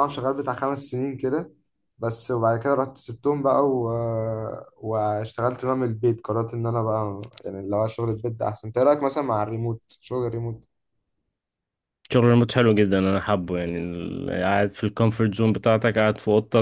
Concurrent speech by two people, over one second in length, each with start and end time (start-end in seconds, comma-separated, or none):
none